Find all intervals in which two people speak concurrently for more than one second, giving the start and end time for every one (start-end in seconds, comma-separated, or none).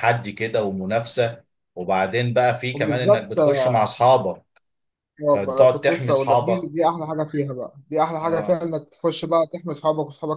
5.3-6.7